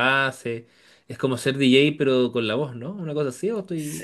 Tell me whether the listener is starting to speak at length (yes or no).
yes